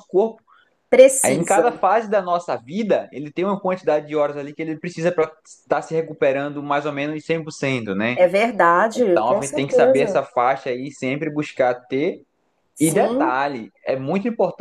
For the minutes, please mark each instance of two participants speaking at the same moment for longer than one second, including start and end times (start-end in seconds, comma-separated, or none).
8.9-10.2